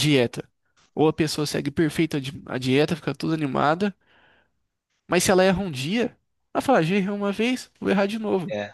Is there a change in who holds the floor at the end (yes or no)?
no